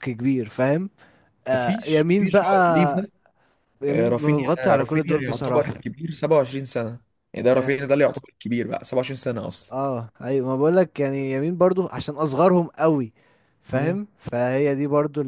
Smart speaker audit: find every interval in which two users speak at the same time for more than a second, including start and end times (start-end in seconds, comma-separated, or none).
1.5-3.1, 3.9-5.7